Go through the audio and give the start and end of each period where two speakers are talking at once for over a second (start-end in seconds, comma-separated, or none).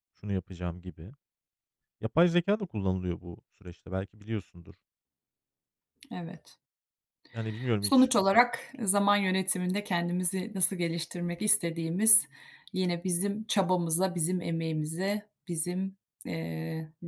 none